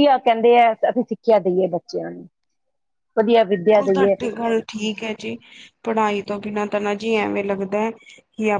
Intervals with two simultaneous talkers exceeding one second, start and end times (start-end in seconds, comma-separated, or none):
none